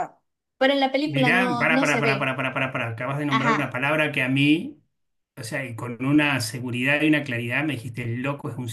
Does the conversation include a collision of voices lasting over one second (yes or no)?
yes